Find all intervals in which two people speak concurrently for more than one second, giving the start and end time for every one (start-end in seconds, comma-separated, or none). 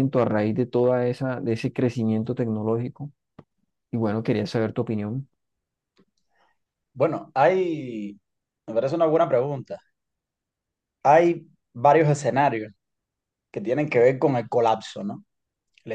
none